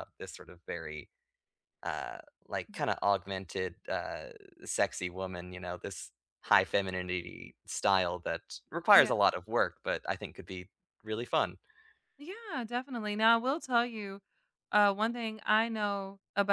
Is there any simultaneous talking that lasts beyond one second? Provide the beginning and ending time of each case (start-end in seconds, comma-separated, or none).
none